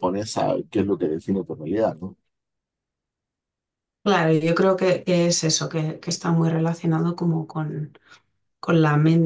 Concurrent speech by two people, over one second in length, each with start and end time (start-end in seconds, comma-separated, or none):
none